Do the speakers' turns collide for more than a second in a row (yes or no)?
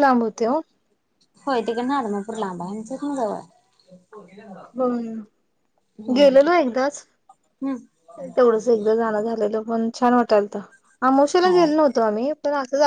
no